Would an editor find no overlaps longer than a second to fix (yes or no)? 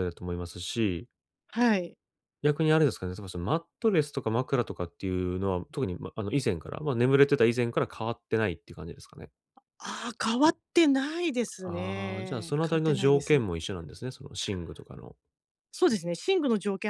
no